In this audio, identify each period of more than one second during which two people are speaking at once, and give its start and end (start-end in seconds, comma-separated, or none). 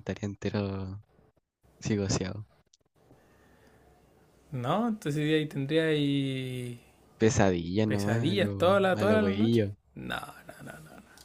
7.9-9.7